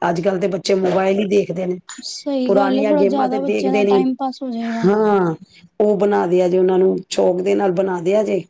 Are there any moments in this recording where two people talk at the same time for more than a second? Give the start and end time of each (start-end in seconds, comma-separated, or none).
2.4-4.0